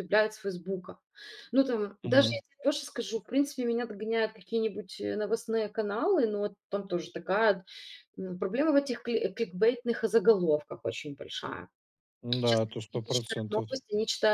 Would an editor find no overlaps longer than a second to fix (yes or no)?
no